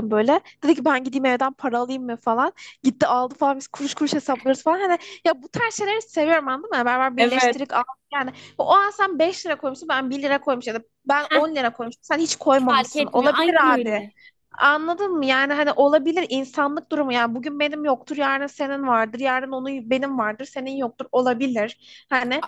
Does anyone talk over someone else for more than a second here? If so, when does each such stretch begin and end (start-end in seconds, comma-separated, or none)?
12.5-14.1